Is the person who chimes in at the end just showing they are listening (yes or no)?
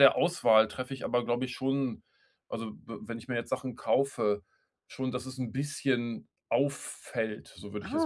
no